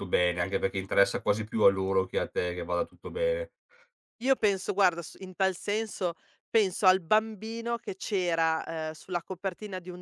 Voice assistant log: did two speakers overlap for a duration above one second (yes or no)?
no